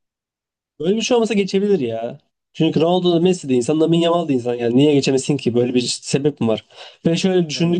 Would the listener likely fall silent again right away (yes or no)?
yes